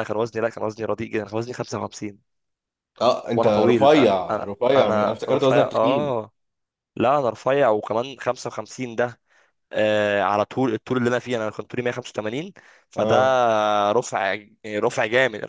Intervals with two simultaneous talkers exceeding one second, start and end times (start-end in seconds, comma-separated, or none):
3.4-6.2